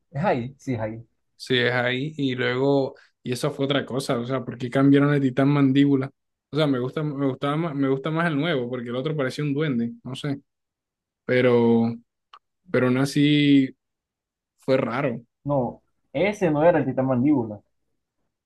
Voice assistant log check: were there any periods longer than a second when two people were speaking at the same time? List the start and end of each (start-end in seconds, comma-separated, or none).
none